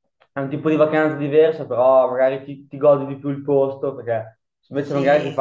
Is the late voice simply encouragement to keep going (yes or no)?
yes